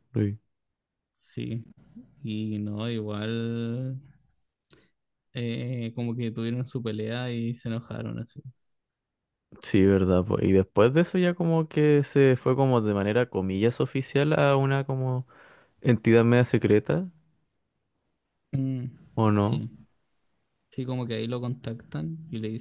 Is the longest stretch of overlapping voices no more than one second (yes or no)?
yes